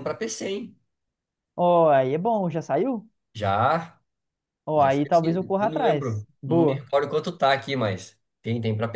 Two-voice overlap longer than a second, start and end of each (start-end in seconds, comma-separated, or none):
4.8-6.9